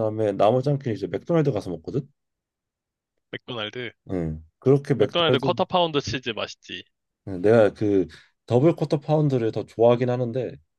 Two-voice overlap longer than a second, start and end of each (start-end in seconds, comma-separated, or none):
none